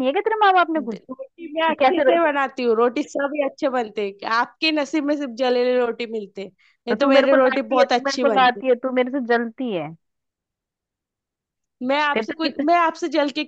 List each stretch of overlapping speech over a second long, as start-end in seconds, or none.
6.9-8.6